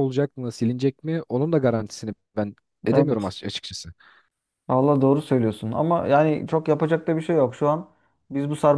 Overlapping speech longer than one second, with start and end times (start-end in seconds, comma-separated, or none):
none